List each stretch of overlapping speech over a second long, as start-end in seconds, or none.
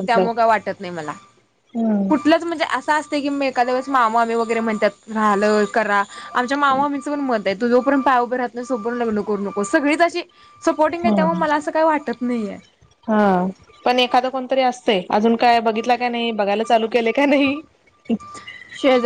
none